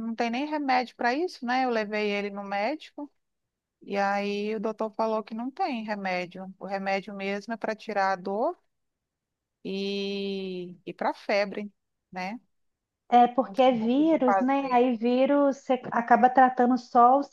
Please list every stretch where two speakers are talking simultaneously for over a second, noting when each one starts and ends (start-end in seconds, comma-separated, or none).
13.4-14.8